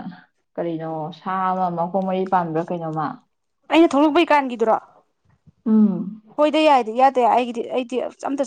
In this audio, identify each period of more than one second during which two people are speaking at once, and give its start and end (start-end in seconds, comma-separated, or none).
none